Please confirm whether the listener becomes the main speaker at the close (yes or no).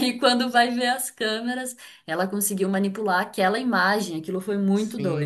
yes